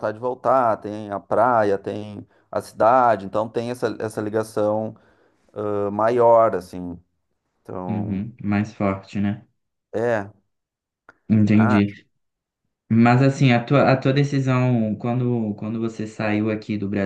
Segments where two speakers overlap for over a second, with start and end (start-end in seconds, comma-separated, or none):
none